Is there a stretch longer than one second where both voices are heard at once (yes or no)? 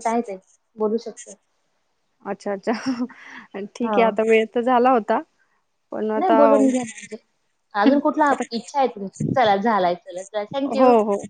no